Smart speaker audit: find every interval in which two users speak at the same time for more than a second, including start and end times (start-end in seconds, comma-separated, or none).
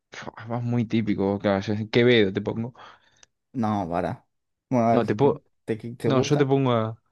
none